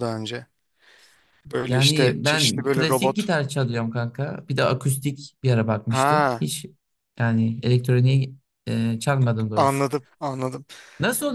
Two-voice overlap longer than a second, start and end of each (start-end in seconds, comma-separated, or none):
1.7-3.3